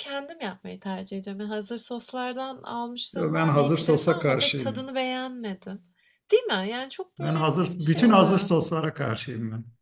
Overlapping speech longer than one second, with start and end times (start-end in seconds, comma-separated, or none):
3.1-4.9, 7.2-8.5